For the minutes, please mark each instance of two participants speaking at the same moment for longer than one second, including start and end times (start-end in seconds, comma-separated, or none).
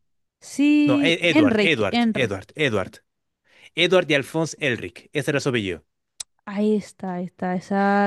0.8-2.4